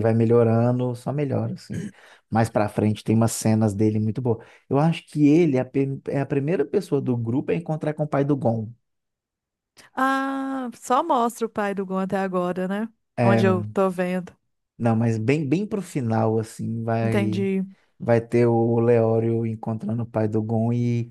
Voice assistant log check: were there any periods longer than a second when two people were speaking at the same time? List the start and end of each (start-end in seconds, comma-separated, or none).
none